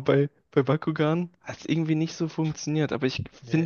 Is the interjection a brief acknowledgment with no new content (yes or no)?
yes